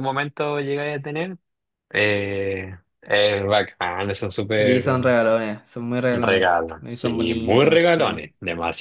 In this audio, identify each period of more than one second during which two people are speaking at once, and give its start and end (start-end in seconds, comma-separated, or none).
6.1-8.2